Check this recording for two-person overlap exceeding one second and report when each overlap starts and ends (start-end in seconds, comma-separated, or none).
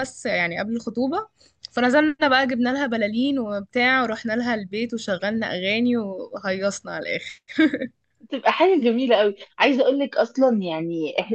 none